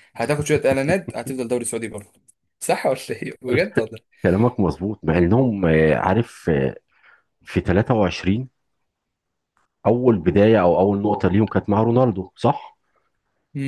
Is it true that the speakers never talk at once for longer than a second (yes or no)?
yes